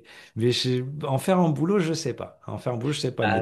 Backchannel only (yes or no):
yes